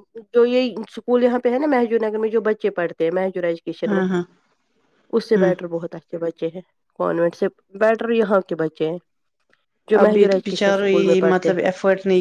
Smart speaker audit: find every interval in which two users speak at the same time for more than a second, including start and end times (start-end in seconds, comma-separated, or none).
10.0-11.5